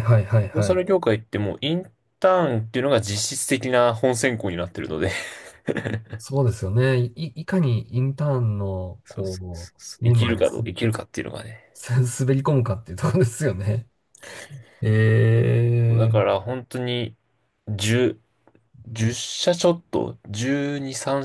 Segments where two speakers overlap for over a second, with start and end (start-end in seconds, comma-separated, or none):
9.0-10.6